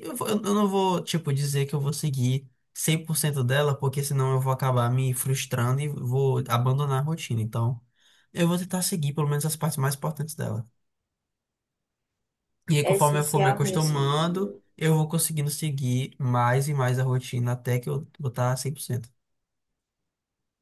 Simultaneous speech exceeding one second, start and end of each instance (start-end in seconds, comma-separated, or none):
12.8-14.6